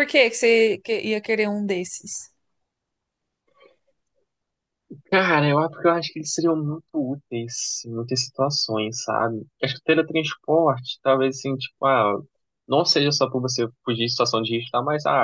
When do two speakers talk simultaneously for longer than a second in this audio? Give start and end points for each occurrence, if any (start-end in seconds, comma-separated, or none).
none